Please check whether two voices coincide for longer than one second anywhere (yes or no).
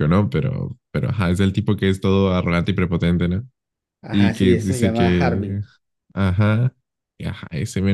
yes